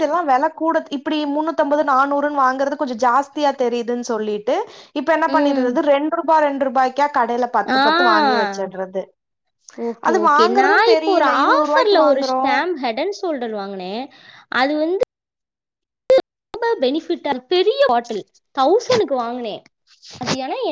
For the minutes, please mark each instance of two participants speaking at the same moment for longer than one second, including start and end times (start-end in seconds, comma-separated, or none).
10.1-12.4